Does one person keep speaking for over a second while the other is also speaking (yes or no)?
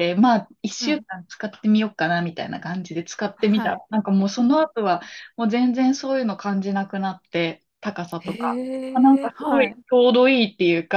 yes